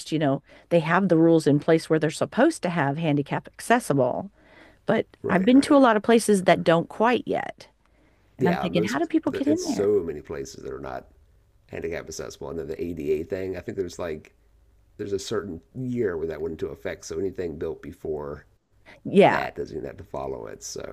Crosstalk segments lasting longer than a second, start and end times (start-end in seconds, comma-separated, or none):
8.4-9.9